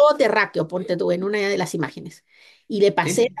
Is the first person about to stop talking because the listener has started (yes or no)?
no